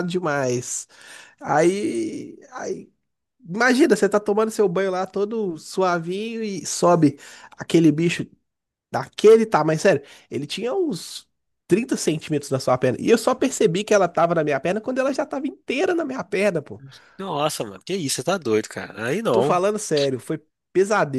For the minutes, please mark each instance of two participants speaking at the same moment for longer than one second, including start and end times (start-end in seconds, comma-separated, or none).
none